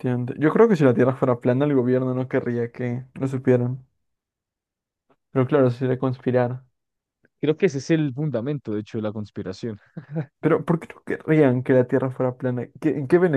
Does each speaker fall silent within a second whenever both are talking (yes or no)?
yes